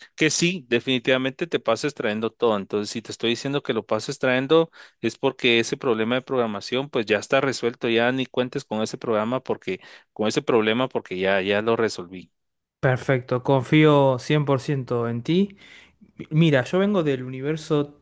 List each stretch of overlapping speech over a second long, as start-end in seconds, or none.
none